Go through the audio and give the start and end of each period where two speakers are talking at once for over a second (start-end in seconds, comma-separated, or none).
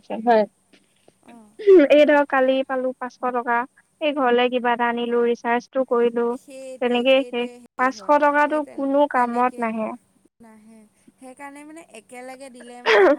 7.1-9.9